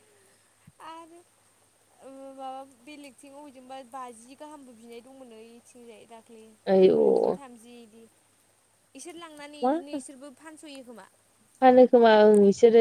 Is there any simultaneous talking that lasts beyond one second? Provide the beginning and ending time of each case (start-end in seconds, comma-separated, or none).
none